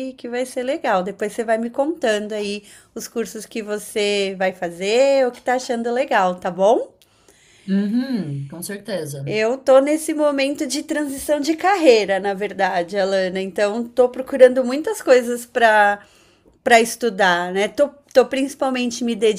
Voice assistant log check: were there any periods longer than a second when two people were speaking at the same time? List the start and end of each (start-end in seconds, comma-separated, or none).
none